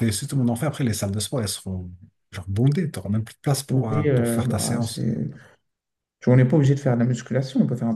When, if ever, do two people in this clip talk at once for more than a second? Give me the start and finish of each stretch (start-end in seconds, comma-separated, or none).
3.7-5.1